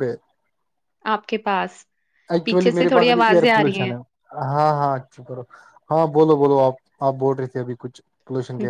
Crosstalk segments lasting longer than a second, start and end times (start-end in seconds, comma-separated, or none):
2.4-3.9